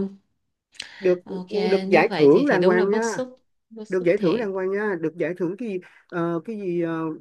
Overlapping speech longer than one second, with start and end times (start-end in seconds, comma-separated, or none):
1.9-3.2